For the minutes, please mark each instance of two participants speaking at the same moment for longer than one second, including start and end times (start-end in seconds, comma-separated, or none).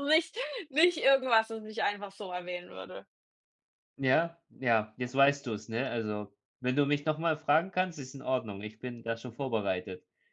none